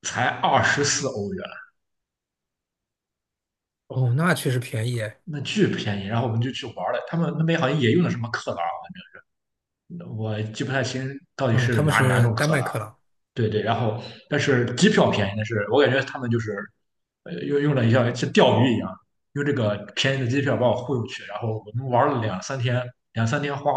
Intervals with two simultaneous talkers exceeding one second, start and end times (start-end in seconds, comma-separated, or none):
11.5-12.7